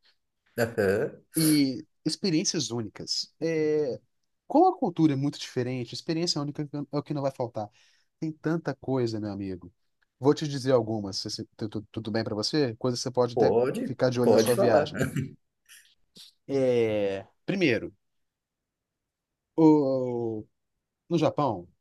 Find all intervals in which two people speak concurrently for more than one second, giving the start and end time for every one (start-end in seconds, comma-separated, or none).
13.3-14.9